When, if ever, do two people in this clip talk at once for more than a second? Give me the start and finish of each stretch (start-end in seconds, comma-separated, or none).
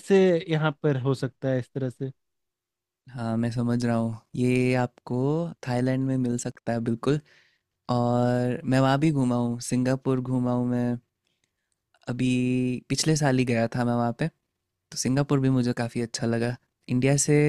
none